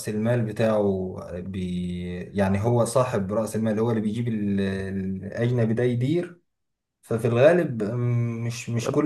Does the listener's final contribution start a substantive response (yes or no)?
no